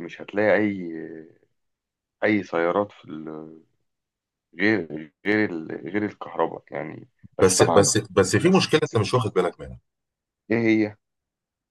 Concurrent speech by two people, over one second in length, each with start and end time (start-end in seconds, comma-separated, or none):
none